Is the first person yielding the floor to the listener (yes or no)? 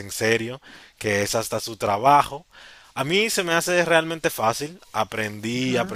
no